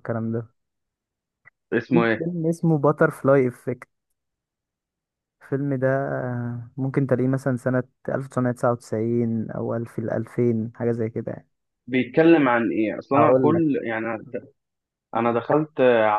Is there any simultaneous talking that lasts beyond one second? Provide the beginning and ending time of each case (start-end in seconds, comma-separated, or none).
none